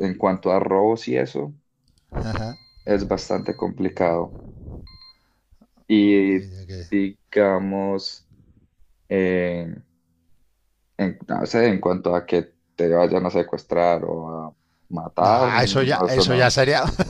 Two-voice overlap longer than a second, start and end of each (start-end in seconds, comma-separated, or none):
15.2-16.6